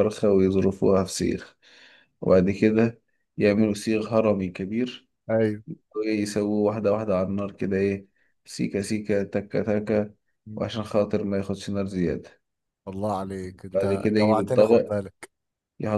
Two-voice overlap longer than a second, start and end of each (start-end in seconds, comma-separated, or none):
13.7-15.0